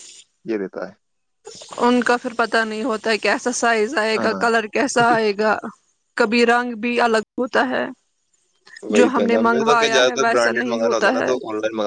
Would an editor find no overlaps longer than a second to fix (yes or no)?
no